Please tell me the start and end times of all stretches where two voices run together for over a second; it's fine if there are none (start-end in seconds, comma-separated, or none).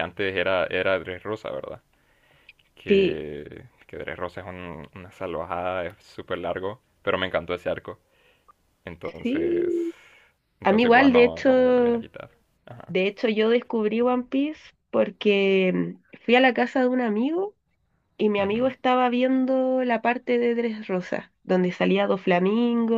10.6-12.1